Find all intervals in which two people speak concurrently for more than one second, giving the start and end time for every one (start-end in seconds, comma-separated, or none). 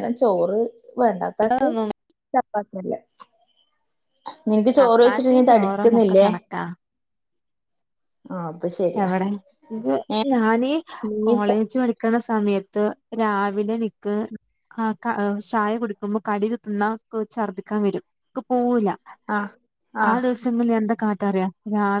4.8-6.3